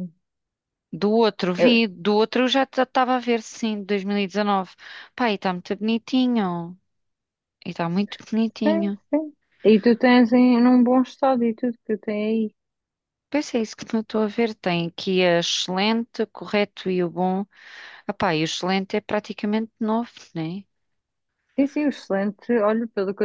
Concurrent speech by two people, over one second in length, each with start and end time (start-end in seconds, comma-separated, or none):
none